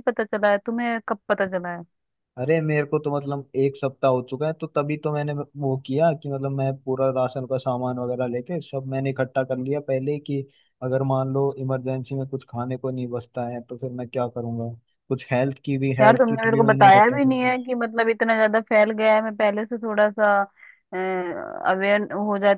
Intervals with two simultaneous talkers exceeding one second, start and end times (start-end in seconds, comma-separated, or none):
16.0-17.4